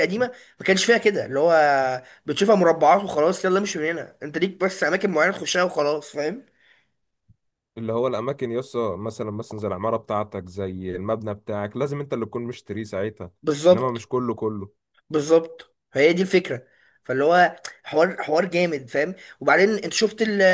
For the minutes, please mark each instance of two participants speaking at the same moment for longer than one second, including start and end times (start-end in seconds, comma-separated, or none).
none